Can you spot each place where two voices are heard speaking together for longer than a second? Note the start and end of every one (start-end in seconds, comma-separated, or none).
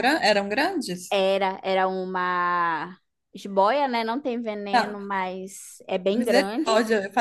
none